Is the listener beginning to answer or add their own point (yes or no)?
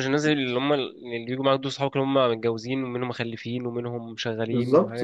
yes